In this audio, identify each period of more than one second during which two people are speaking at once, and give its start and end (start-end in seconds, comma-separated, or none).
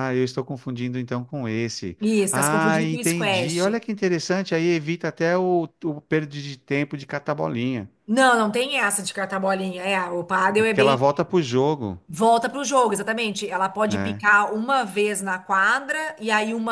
2.0-3.8